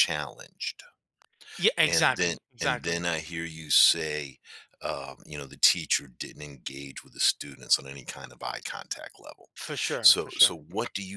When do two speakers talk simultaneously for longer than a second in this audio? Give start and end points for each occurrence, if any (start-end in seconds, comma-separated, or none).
1.9-3.1